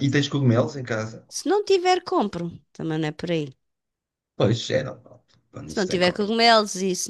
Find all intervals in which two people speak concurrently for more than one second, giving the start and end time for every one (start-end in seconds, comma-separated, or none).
none